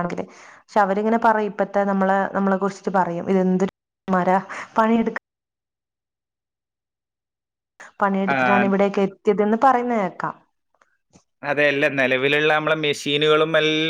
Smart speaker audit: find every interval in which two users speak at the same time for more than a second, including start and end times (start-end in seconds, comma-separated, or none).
none